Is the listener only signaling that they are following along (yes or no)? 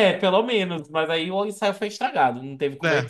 no